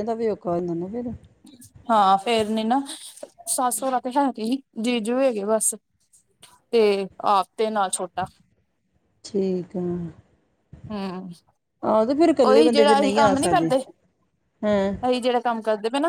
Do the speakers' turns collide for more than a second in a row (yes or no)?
yes